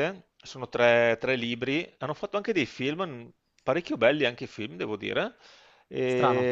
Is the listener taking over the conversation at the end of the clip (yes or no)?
no